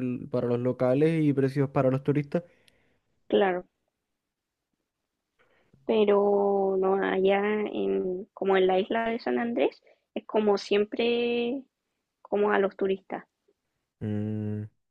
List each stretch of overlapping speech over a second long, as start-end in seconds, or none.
none